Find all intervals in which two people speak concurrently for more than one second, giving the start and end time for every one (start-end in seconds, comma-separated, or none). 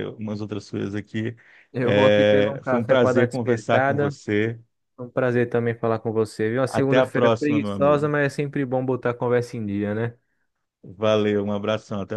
1.8-4.2, 6.7-8.1